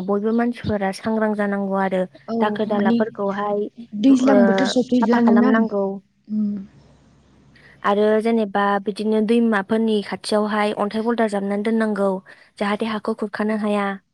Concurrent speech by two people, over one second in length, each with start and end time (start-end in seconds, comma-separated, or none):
3.9-5.5